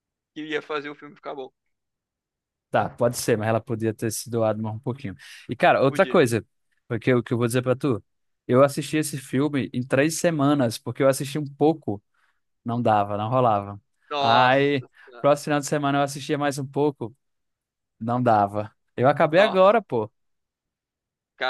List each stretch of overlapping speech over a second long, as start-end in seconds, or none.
none